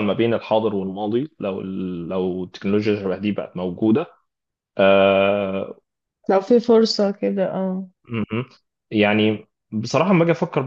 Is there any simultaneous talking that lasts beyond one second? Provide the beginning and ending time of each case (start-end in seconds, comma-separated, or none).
none